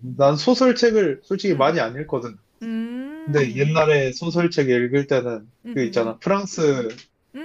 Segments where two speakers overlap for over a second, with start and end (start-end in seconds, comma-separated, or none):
none